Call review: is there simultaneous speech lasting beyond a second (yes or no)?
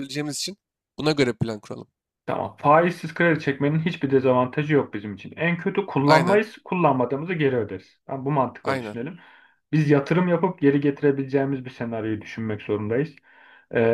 no